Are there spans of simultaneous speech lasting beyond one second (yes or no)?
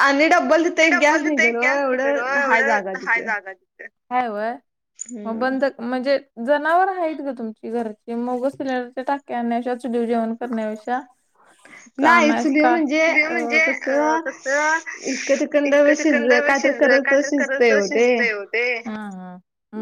yes